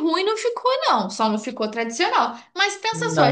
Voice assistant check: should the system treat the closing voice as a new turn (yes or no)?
no